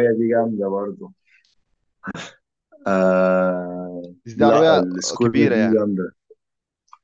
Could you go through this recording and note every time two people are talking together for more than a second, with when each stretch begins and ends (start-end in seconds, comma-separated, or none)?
4.2-5.8